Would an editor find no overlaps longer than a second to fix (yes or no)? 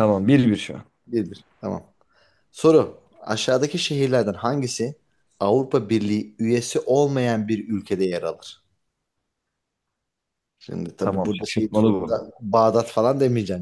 no